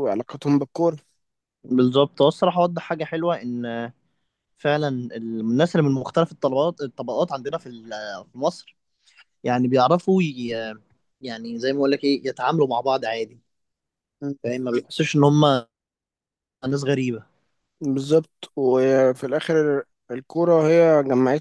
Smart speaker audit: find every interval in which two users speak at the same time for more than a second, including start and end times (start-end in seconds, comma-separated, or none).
none